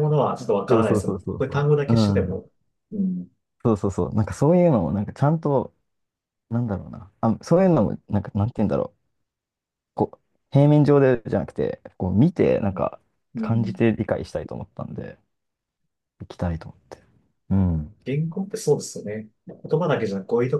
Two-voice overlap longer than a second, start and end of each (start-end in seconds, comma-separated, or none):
0.7-2.4